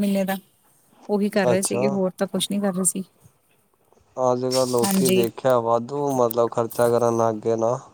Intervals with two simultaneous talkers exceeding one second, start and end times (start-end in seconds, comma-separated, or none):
none